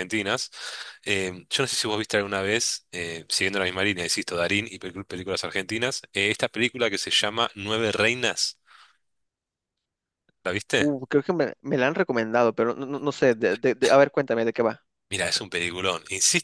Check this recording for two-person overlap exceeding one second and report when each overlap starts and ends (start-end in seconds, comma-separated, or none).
none